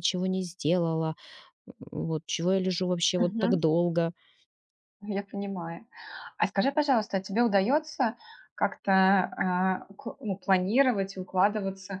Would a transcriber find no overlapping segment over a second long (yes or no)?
yes